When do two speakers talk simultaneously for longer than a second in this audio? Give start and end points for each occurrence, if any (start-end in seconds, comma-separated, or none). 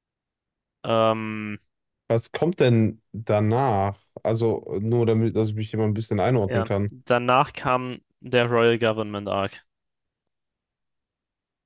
none